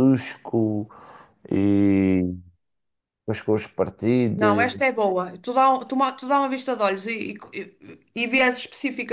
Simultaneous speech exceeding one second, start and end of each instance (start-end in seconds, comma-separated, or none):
none